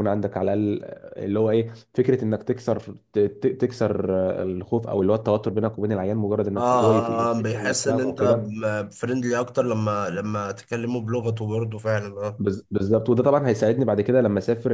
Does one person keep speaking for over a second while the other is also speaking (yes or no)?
yes